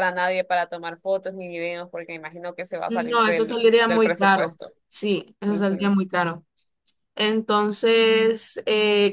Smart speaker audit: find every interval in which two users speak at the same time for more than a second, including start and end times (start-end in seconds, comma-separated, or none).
2.9-4.7